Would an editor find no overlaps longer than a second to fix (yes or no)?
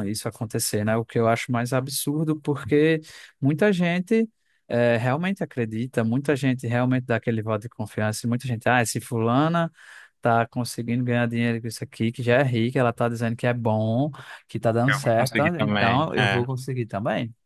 no